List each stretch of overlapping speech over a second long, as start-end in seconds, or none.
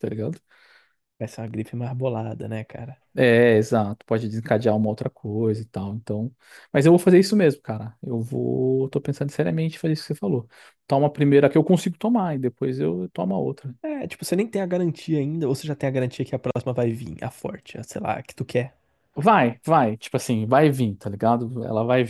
none